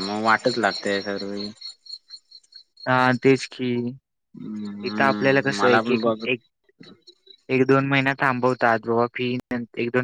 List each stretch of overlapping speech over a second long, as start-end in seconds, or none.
4.9-6.2